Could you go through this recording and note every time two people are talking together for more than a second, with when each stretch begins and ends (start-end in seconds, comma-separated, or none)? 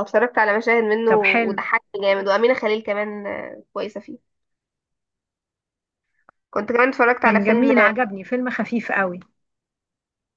none